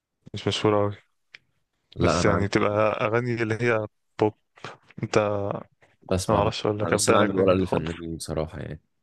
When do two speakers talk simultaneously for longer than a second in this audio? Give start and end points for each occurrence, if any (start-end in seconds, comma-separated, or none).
6.3-7.9